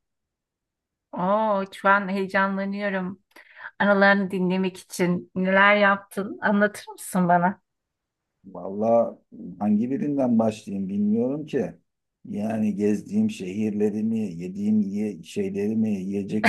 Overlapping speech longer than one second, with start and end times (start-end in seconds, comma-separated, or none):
none